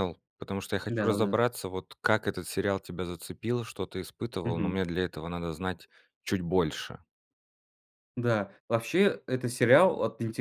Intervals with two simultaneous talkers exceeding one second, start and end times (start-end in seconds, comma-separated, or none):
none